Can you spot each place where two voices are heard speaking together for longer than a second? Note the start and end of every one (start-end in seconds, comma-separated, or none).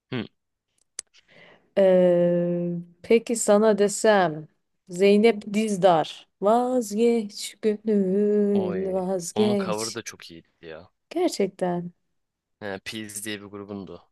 8.6-10.0